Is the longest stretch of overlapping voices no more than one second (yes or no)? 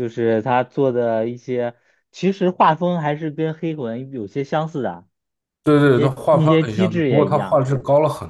no